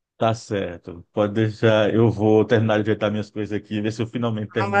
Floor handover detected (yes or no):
yes